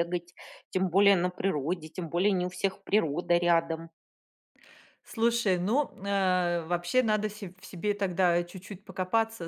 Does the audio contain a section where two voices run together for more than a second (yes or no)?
no